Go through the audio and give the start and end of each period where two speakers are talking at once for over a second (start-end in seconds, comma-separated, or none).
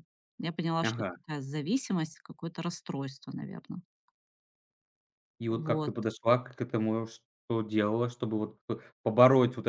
none